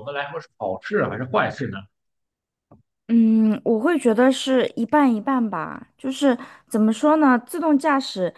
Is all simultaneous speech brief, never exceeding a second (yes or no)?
yes